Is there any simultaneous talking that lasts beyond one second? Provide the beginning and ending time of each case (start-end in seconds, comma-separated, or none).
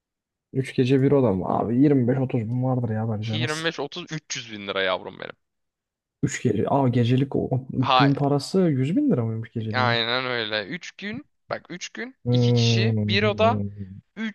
12.2-13.6